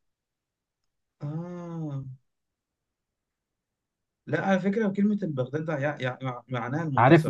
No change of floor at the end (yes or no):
no